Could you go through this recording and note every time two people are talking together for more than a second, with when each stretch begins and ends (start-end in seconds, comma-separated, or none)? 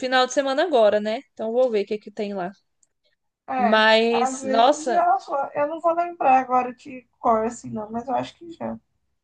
3.6-5.0